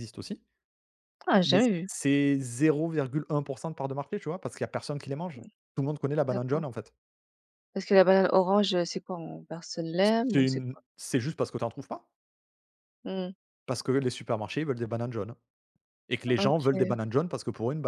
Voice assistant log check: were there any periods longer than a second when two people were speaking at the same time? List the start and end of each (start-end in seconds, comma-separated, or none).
none